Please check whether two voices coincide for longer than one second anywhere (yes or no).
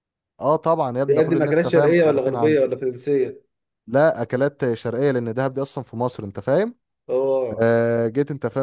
yes